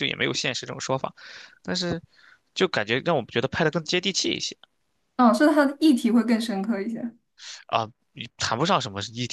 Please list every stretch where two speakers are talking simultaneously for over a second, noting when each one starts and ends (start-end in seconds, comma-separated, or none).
none